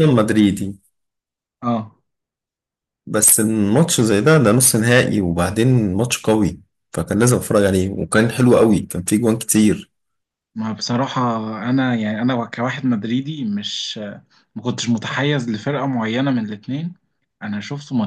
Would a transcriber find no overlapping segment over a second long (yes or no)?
yes